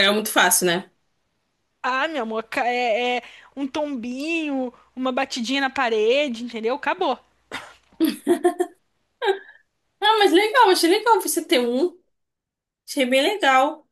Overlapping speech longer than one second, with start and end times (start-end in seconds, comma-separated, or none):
none